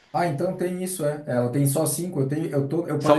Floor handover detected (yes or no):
yes